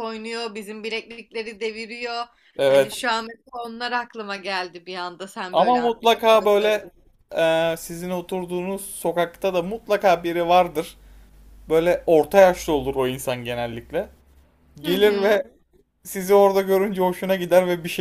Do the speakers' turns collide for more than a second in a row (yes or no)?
yes